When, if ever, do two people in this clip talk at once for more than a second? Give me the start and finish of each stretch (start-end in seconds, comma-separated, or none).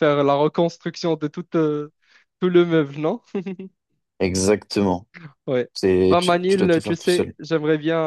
6.1-7.3